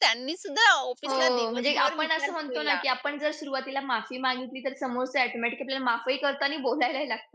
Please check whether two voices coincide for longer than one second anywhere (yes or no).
yes